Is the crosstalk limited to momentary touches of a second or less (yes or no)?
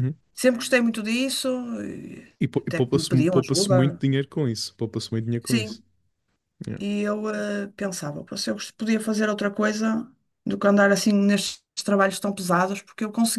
no